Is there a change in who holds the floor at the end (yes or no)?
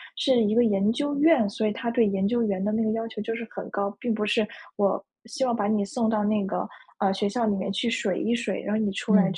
no